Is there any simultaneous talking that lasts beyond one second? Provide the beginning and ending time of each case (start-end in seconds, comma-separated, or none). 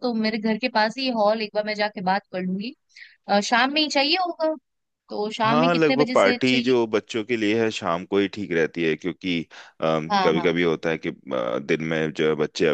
5.5-6.7